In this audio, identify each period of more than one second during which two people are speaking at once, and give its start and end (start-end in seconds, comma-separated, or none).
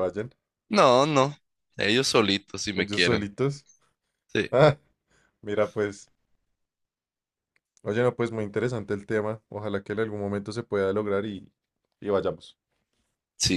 none